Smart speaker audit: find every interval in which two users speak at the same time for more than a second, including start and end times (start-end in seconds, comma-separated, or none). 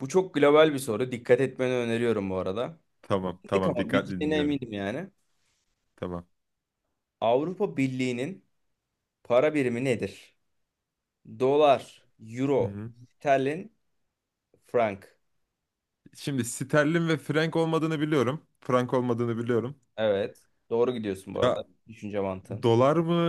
3.4-4.7